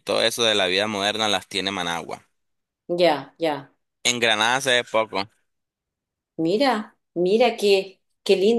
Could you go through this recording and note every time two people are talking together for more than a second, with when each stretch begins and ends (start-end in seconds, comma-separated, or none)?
none